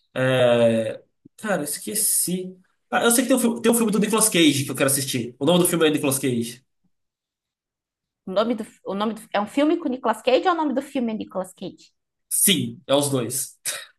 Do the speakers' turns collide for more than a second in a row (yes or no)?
no